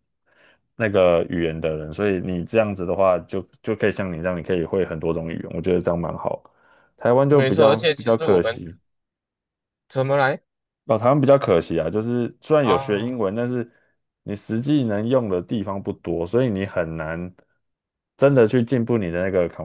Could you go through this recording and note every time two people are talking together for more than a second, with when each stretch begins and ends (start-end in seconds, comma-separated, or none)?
7.3-8.6